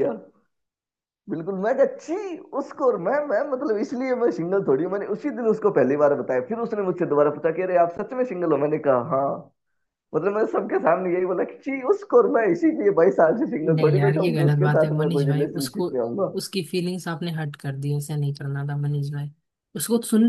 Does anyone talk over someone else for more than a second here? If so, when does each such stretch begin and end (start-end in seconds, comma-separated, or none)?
13.6-15.9